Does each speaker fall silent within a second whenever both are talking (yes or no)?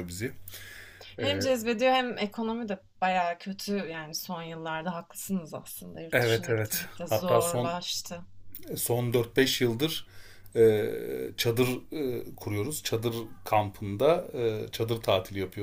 no